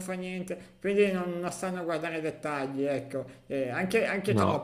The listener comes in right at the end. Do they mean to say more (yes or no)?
no